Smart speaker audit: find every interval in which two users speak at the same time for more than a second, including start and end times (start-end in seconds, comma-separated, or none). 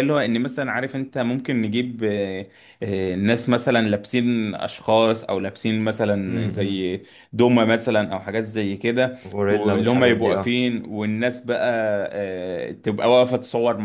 9.2-10.5